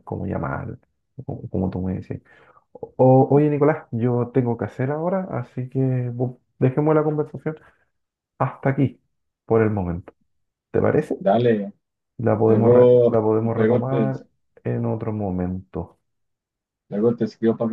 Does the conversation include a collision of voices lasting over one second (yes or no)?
yes